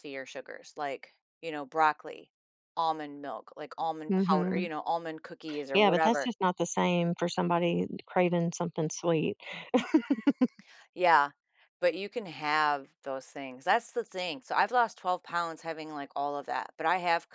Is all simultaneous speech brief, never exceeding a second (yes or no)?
yes